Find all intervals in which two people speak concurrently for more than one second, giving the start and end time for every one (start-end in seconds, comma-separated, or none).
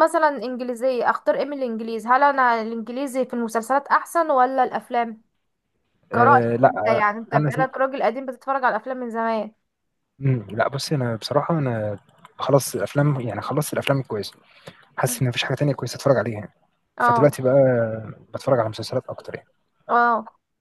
6.1-7.7